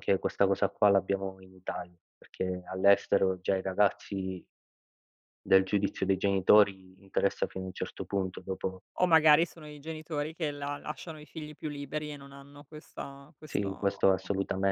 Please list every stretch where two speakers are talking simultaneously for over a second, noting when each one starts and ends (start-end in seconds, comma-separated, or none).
none